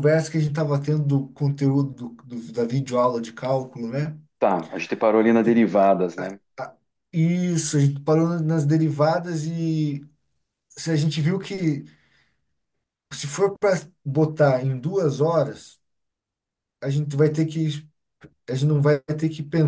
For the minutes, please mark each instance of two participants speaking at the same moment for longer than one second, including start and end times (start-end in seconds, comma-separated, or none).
none